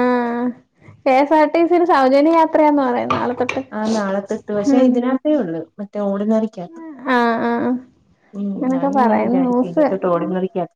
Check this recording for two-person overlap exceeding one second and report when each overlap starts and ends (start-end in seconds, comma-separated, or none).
8.7-10.1